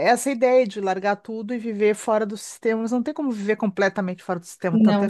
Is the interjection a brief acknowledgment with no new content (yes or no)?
yes